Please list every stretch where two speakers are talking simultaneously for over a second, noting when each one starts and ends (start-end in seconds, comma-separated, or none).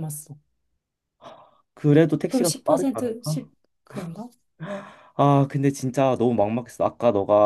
2.3-3.5